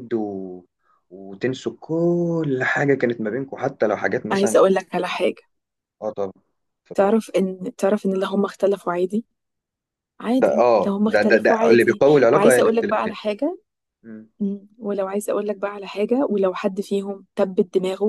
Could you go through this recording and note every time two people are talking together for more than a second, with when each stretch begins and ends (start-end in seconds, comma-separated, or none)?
10.4-13.2